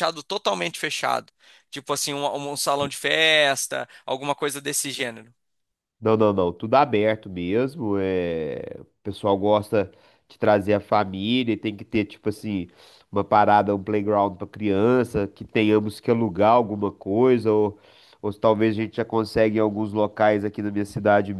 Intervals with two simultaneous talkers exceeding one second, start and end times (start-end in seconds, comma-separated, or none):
none